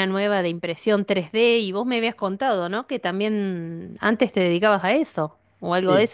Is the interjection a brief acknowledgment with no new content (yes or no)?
no